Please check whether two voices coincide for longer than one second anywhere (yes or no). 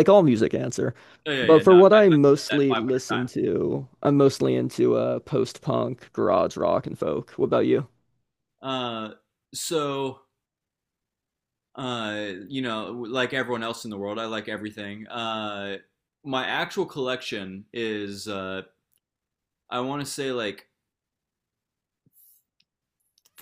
yes